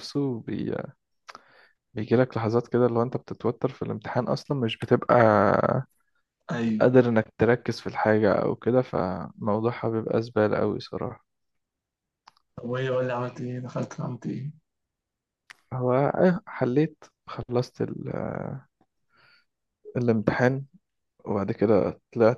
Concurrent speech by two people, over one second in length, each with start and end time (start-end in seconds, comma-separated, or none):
none